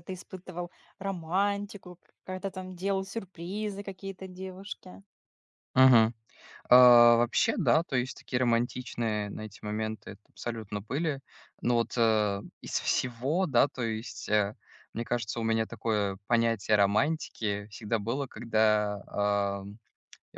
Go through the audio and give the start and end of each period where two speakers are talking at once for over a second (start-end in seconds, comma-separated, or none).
none